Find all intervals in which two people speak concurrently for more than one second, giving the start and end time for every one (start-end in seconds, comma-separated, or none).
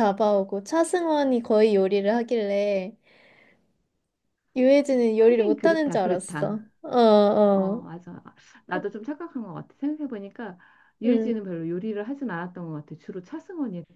5.2-6.5